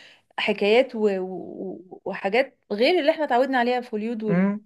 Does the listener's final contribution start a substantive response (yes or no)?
yes